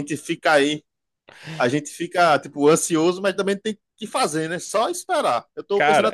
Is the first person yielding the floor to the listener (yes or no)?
no